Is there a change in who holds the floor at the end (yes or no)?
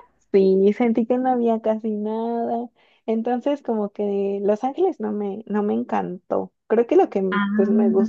no